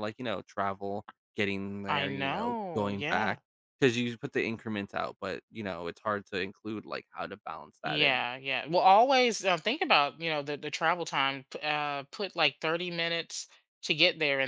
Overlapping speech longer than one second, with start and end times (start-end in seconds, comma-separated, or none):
1.9-3.4